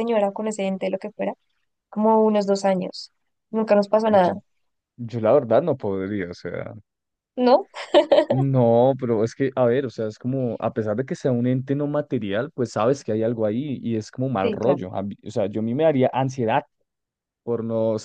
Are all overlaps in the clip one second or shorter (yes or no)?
yes